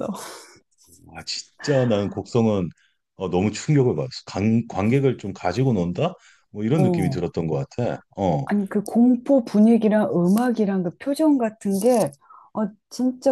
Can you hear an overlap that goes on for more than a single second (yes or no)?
no